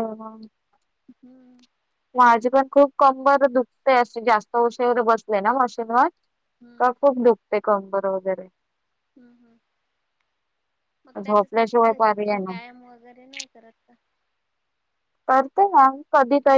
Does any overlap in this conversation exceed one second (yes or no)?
yes